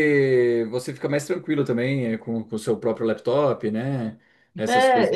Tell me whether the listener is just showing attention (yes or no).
no